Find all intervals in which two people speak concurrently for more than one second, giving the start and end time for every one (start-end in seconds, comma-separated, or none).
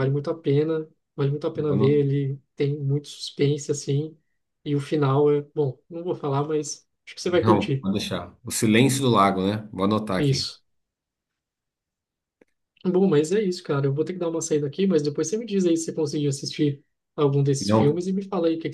none